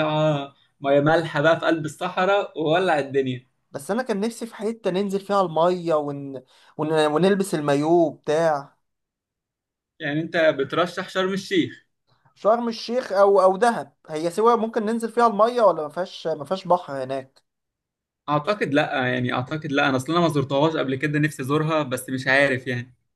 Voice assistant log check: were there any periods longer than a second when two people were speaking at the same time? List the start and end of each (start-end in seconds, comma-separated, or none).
none